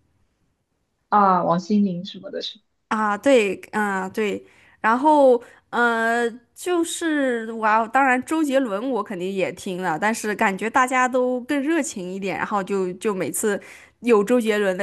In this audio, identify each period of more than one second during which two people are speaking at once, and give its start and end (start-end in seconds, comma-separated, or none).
none